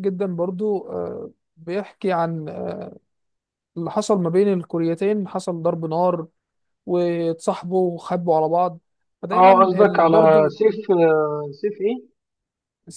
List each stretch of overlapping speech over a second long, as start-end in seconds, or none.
9.3-10.5